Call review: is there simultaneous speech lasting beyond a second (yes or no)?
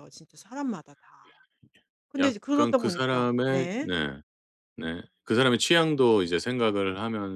yes